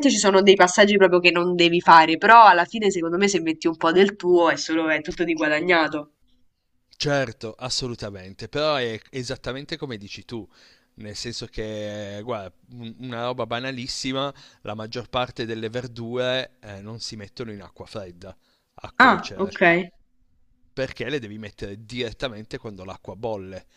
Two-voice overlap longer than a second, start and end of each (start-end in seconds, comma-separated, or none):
none